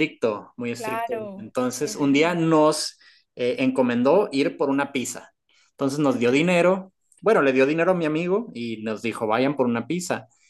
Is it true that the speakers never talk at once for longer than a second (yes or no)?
no